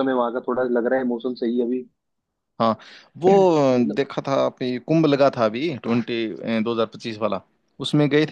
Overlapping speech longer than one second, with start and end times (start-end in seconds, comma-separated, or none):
none